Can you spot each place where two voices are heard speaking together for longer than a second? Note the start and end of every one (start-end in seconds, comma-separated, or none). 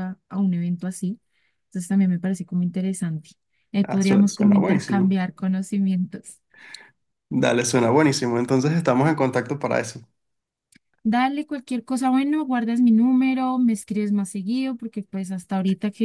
3.8-5.2